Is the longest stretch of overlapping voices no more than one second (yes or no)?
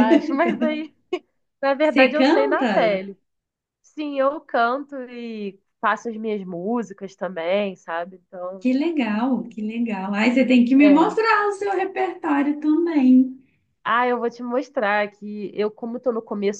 no